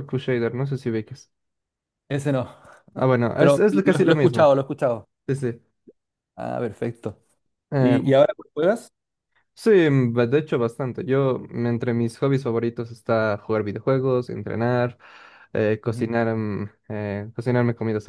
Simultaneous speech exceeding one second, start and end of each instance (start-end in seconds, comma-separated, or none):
3.0-4.5